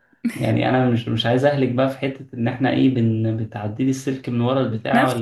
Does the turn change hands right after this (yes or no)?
yes